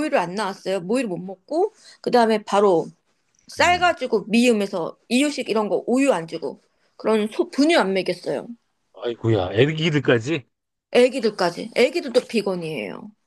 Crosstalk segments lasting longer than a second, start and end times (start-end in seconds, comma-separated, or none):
none